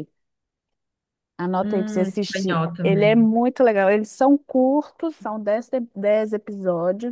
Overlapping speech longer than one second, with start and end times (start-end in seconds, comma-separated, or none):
1.6-3.3